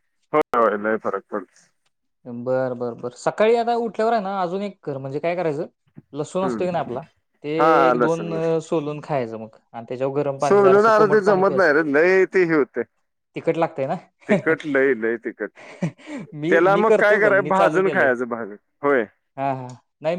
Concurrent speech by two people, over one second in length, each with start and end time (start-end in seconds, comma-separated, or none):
10.5-11.7, 16.5-18.1